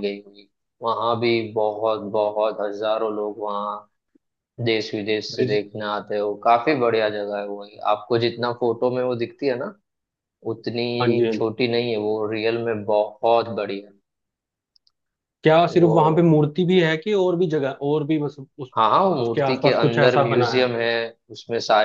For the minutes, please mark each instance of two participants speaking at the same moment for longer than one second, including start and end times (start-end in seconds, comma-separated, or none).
19.2-20.7